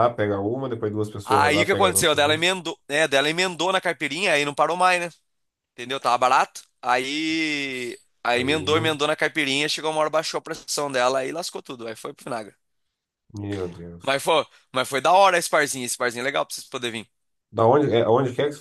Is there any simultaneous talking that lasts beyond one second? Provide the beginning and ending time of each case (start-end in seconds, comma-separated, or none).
1.2-2.5